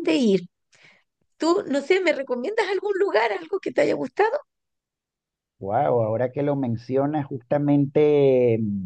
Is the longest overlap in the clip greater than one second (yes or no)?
no